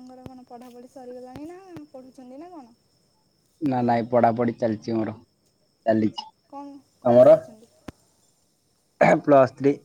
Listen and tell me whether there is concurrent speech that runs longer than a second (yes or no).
no